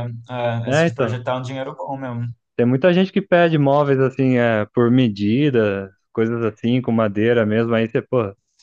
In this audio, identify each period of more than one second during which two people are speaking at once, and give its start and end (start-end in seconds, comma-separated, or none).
none